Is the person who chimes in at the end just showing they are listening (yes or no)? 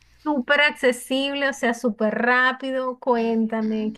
no